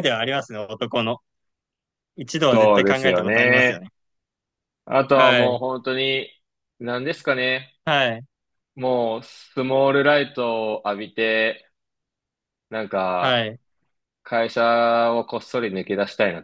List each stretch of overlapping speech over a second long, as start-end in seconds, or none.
2.5-3.8